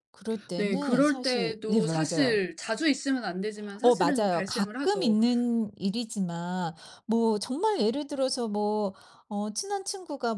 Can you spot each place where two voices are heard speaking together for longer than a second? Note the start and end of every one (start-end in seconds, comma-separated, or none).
0.6-2.4, 3.8-5.2